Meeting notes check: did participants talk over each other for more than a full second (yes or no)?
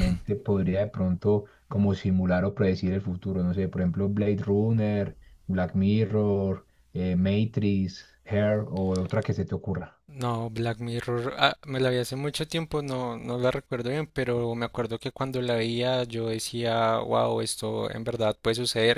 no